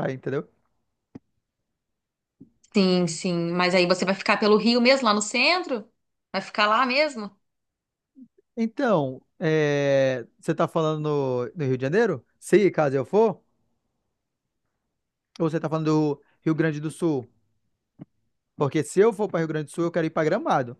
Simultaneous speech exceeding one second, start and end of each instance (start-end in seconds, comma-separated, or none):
none